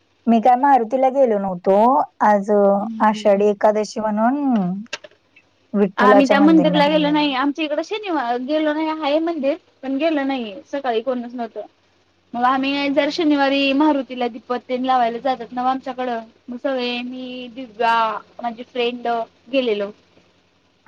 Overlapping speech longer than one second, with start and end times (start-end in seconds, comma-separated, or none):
6.0-7.3